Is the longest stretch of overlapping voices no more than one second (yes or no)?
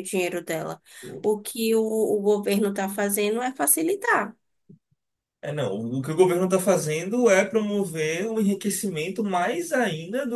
yes